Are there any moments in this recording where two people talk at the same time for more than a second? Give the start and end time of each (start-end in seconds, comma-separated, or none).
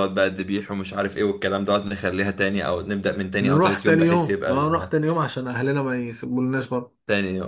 3.4-4.9